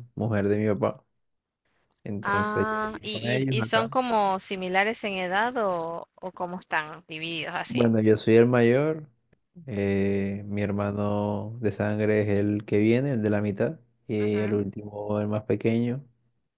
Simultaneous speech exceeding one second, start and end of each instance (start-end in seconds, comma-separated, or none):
2.2-3.9